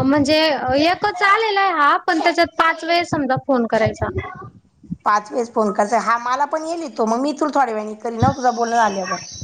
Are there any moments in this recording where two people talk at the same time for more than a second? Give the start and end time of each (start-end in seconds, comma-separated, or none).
none